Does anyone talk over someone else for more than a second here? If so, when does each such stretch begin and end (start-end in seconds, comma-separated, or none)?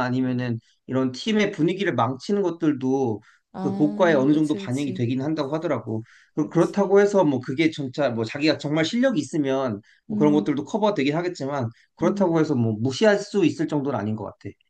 3.6-5.0